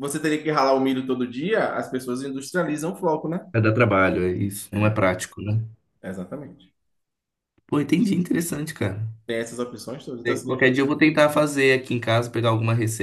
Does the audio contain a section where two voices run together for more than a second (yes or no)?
no